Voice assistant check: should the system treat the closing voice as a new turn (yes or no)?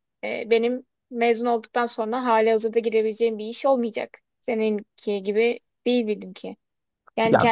no